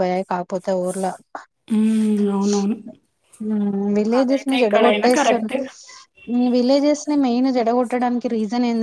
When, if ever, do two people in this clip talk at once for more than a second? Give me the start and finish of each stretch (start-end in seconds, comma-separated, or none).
4.2-5.5